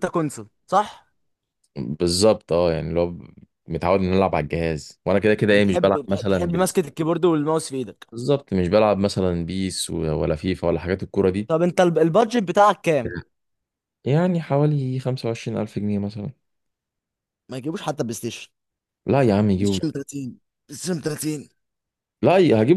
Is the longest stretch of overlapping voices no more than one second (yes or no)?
no